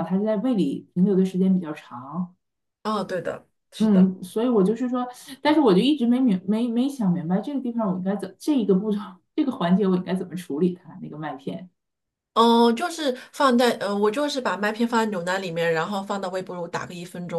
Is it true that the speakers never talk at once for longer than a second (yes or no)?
yes